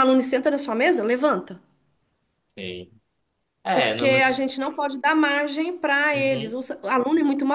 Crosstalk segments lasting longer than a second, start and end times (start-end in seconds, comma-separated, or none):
none